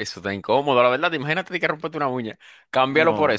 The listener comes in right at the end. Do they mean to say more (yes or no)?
no